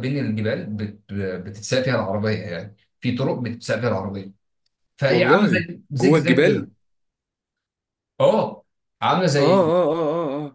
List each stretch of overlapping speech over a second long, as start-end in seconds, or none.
5.1-6.7